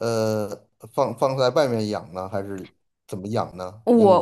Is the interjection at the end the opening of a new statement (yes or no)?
yes